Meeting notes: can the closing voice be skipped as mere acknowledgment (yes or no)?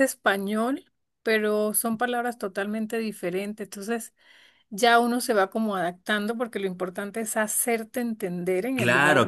no